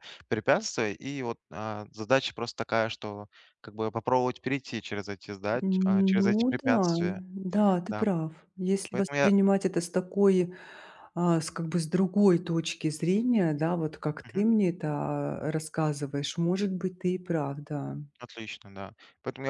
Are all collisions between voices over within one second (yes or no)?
no